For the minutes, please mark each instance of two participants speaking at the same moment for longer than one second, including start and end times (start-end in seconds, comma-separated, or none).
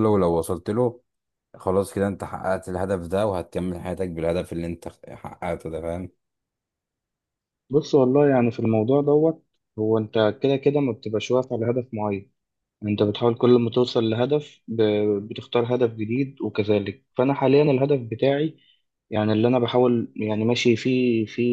none